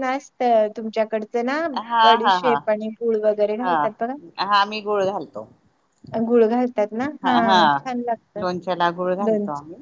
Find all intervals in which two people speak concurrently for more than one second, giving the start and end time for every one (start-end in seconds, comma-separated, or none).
none